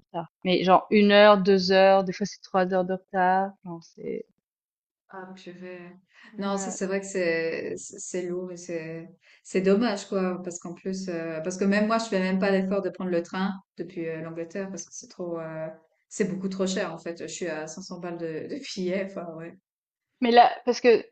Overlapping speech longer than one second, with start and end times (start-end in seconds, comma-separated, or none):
none